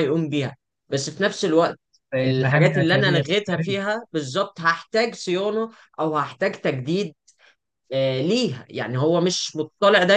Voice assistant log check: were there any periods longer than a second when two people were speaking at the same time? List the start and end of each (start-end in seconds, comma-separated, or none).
2.2-3.8